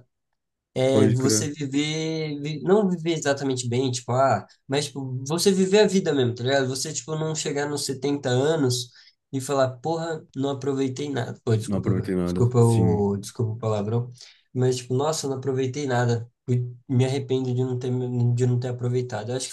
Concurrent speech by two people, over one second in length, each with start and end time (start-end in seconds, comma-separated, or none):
11.6-13.1